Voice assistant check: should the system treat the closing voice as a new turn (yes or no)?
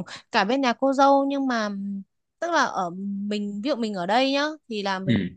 no